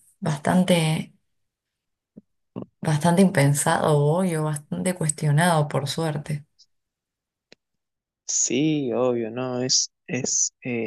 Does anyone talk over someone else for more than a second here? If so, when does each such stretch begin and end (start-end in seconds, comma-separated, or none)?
none